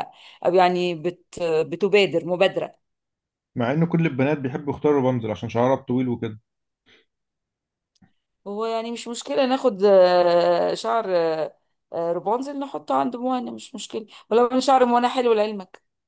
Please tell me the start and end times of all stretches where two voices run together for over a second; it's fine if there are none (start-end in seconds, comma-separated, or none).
none